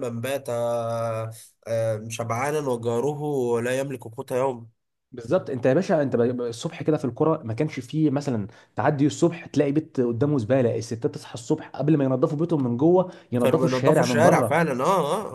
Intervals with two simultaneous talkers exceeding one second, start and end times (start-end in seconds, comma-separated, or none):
13.4-14.7